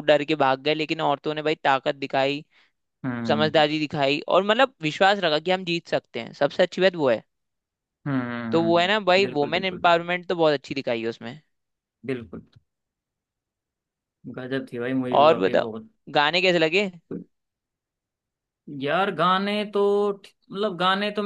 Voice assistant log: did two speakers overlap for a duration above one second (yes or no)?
yes